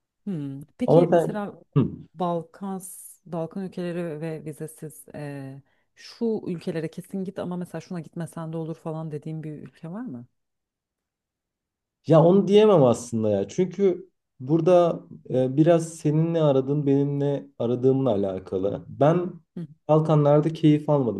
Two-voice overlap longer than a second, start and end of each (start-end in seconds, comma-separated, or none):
none